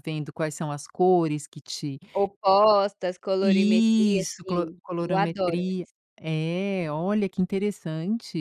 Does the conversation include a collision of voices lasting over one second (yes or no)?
yes